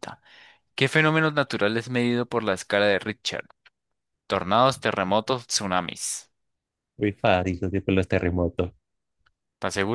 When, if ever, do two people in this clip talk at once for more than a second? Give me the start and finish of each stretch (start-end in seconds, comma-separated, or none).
none